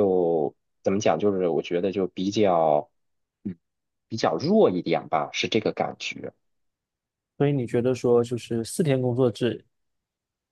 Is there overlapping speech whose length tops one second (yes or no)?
no